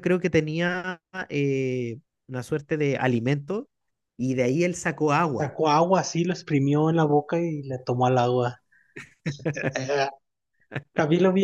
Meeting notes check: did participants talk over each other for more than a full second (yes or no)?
no